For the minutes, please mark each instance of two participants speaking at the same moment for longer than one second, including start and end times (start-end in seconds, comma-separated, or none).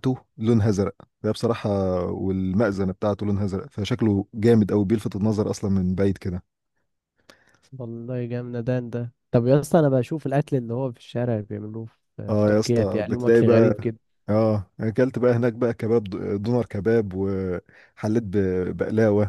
12.4-13.7